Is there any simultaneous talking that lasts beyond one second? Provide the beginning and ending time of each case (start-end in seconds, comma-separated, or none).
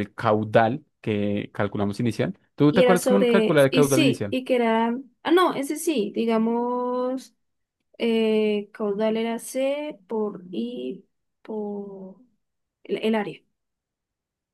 2.7-4.4